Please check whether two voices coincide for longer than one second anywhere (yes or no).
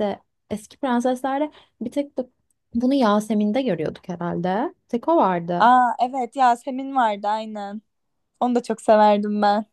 no